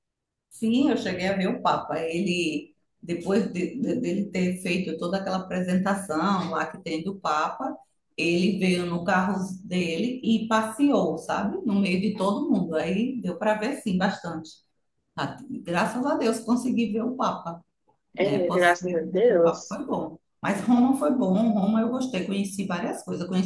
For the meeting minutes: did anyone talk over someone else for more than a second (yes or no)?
yes